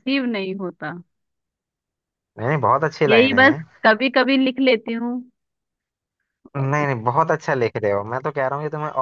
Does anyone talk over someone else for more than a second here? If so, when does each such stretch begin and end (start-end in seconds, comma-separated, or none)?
none